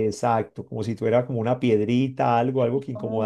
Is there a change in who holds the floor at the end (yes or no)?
no